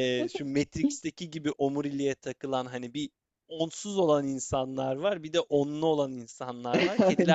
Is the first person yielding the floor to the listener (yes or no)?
no